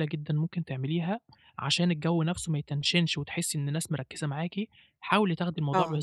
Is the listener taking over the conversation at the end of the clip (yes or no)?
no